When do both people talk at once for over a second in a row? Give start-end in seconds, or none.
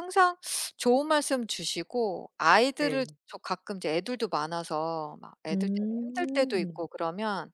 5.5-6.8